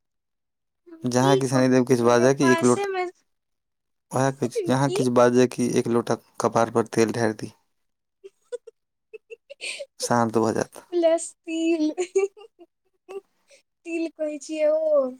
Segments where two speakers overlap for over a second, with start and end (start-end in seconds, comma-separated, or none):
1.2-2.9